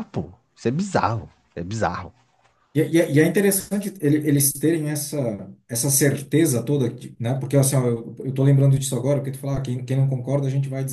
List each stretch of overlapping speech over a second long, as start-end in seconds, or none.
none